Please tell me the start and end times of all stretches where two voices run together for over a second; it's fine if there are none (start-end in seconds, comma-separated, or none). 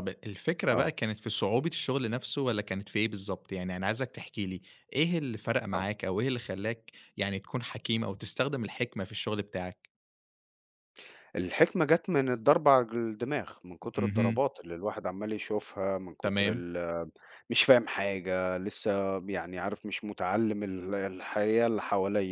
none